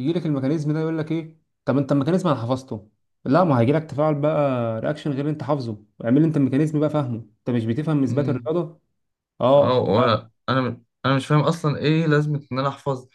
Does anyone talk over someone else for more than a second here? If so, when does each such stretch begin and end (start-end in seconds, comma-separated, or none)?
none